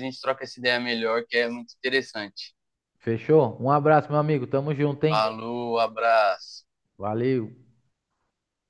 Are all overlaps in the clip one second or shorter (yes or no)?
yes